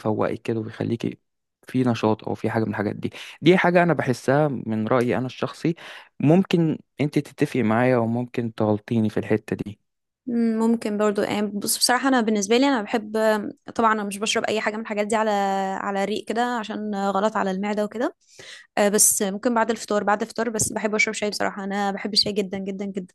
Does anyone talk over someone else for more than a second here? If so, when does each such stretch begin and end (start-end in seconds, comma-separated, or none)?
none